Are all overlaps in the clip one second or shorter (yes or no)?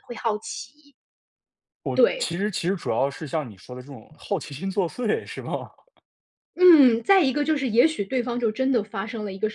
yes